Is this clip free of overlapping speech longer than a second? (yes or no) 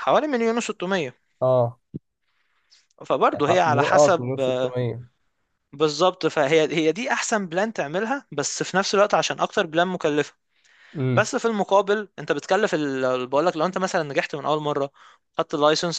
no